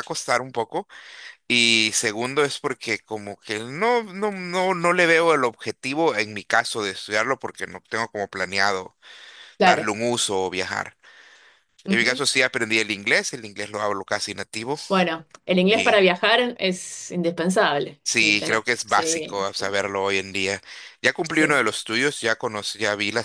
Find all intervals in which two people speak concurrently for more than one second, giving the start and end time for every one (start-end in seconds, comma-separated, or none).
18.0-19.8